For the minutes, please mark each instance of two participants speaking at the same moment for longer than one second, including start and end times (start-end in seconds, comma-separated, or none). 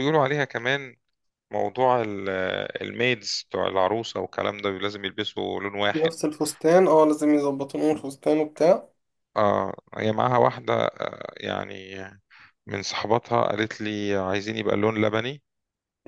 none